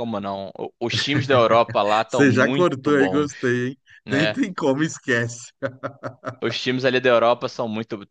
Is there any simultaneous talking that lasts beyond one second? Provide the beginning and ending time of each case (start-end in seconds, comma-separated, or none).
2.1-3.3